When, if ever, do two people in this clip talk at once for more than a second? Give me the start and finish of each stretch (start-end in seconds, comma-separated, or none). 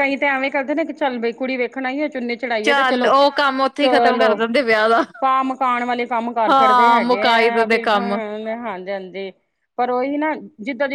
6.5-8.2